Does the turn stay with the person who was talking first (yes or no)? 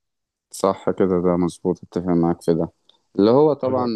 yes